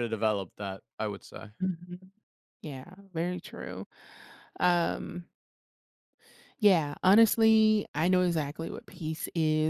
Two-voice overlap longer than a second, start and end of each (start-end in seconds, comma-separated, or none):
none